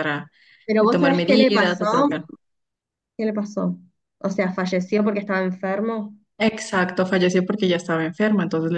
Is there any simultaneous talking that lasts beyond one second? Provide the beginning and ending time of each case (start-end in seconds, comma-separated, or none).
0.8-2.2